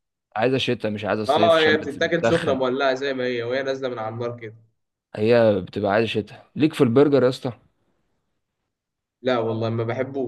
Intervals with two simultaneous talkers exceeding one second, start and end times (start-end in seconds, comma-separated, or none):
1.3-2.6